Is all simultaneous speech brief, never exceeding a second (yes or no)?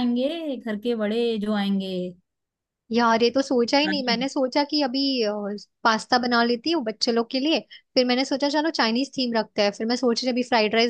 yes